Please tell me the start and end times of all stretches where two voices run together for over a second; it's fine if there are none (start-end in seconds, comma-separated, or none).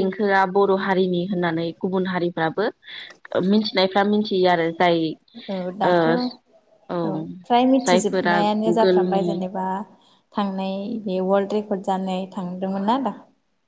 7.8-9.3